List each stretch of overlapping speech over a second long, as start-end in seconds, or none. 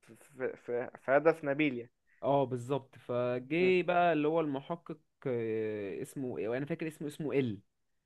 none